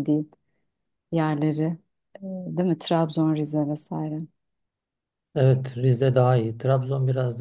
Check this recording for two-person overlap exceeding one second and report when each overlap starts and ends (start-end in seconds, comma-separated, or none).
none